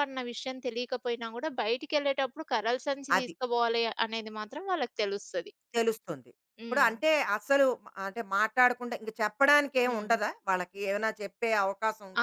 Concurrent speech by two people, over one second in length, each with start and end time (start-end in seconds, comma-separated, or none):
none